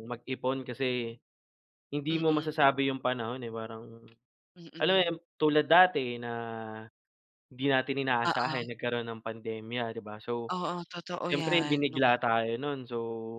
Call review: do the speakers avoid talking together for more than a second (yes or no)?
yes